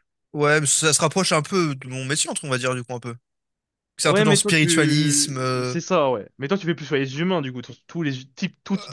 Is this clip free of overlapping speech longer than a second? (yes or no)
no